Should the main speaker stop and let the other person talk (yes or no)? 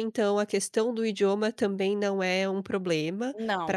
no